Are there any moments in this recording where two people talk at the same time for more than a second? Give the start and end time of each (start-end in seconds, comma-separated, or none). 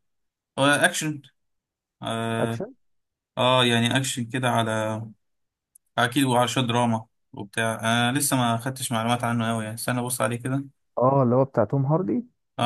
none